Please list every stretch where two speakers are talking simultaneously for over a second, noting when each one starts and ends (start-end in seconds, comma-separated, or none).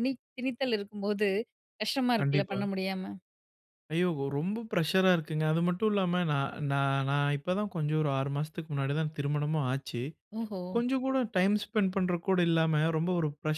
none